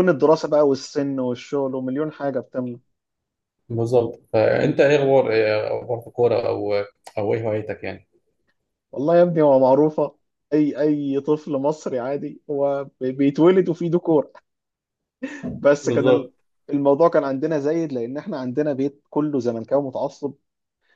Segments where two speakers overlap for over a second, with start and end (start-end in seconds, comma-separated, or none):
none